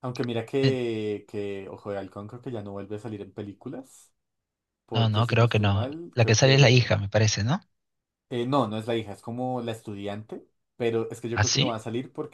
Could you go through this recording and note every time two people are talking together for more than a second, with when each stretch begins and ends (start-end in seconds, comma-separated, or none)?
4.9-7.0